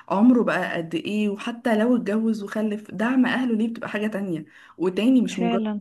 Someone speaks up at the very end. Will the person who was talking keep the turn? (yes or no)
yes